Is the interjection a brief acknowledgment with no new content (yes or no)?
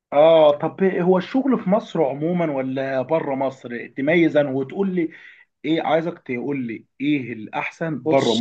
yes